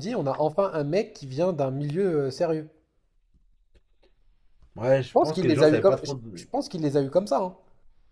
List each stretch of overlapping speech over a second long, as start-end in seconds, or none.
5.1-6.5